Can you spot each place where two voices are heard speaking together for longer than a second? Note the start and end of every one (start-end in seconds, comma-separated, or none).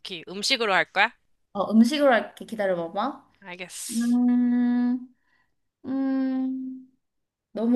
none